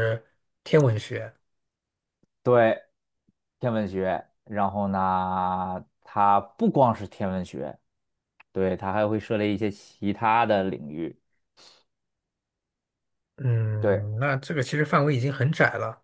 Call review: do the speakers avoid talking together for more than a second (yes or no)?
yes